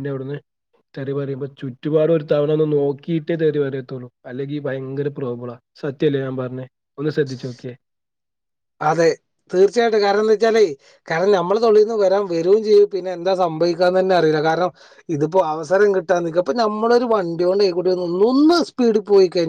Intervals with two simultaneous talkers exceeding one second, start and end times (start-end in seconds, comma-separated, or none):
none